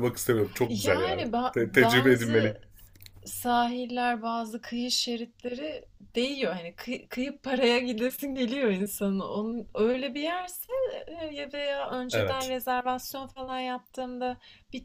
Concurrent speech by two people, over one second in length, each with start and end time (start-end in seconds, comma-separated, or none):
0.7-2.5